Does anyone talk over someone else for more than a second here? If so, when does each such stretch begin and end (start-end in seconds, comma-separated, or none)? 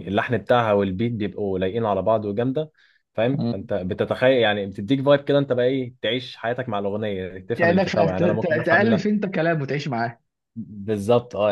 7.5-9.1